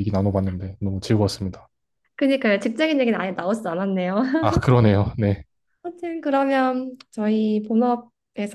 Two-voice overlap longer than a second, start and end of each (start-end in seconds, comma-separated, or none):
none